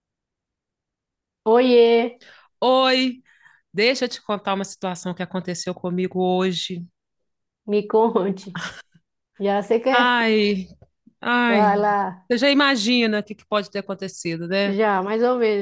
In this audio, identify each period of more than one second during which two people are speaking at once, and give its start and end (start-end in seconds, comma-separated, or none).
none